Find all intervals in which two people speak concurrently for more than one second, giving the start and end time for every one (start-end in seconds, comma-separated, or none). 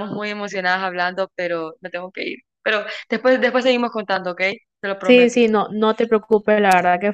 none